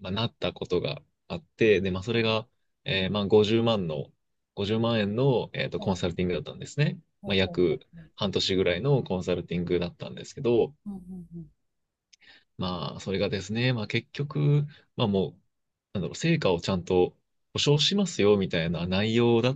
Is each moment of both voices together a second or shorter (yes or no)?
yes